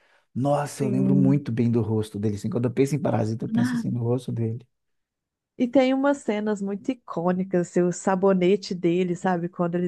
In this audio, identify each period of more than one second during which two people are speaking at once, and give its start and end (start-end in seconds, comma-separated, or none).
none